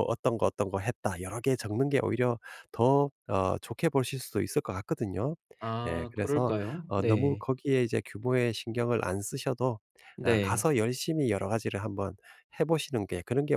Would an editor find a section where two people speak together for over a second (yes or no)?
yes